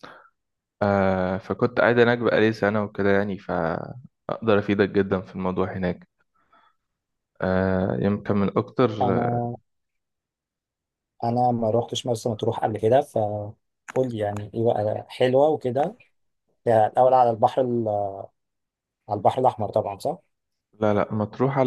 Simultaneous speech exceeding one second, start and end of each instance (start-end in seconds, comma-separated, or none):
none